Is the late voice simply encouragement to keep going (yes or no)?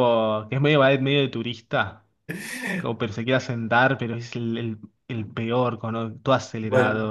no